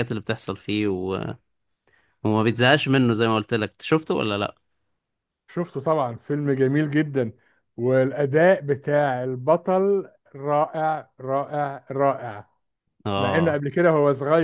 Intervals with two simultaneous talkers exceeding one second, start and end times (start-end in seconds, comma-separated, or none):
none